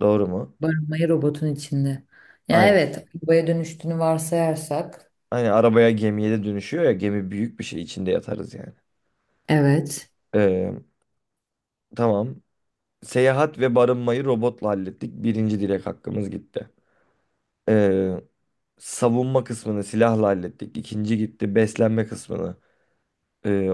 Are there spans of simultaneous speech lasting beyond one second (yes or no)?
no